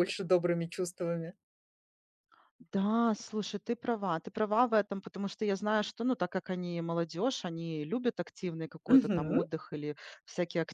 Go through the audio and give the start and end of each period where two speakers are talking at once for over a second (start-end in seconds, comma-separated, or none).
none